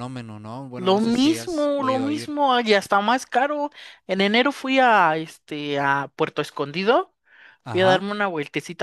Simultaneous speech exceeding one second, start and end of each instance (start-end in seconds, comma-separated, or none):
0.8-2.4